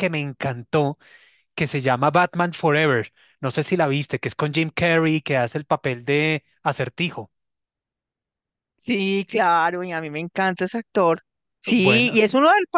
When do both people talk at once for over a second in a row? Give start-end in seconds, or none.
none